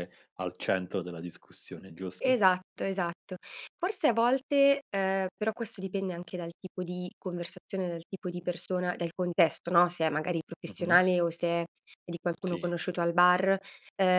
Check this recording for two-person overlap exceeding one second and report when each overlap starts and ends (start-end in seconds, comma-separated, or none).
none